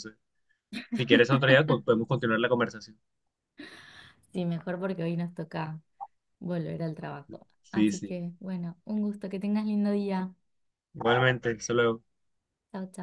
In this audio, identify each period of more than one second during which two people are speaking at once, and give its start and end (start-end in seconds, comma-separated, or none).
none